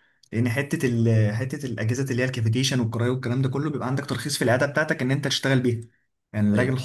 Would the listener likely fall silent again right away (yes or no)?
yes